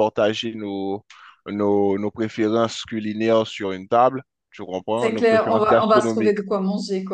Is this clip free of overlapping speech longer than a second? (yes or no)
no